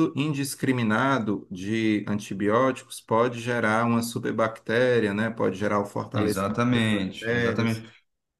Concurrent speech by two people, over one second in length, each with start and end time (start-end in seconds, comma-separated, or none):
6.1-7.9